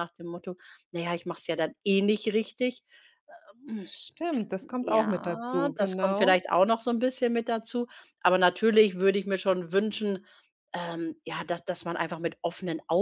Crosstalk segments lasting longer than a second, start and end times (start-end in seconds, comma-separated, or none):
4.8-6.4